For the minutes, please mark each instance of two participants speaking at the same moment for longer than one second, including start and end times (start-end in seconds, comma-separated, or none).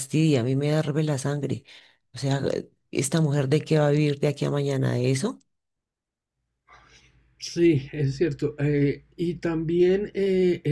none